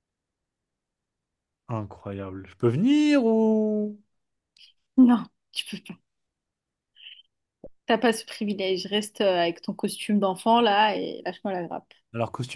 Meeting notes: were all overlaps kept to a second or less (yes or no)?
yes